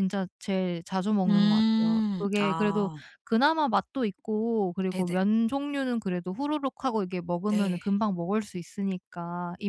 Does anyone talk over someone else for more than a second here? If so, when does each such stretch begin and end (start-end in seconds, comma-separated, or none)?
1.3-3.0